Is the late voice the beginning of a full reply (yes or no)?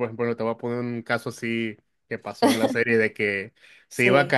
no